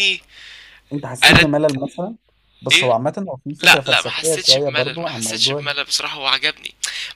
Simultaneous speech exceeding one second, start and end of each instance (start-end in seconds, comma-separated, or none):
3.6-5.7